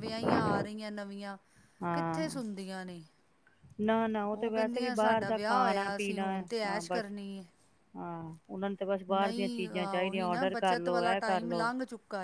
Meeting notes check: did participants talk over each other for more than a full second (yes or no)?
yes